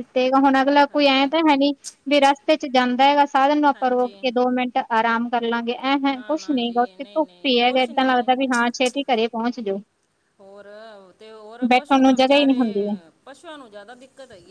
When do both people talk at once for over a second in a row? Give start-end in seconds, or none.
6.1-8.3